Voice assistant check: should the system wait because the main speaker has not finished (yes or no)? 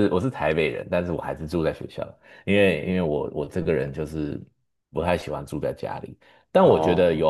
yes